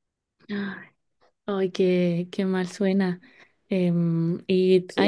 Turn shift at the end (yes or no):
no